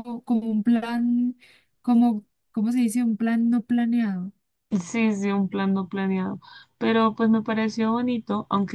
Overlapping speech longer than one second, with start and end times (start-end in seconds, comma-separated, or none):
none